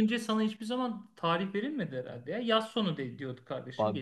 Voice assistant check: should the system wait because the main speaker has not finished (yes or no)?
no